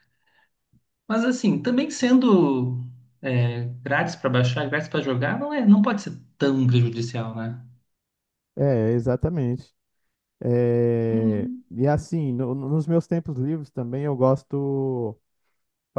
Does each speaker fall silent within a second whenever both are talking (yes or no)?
yes